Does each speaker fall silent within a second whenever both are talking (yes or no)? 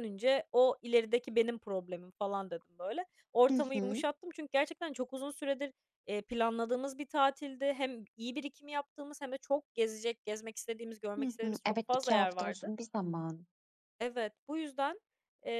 no